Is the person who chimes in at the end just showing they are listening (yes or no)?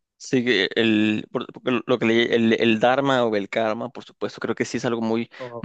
yes